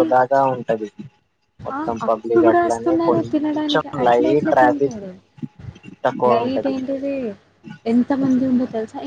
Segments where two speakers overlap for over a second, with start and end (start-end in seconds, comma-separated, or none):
1.8-5.0